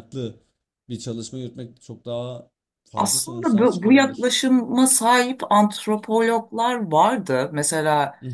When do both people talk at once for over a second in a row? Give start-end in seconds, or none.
3.0-4.3